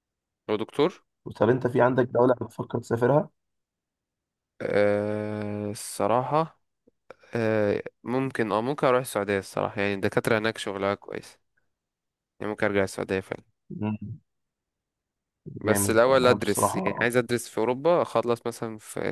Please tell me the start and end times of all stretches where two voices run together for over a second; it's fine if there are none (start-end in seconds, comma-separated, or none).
15.7-17.1